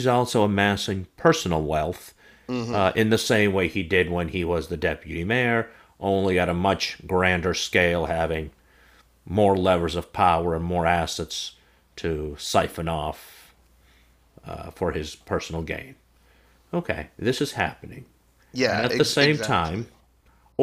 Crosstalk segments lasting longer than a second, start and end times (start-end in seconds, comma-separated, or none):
18.6-19.9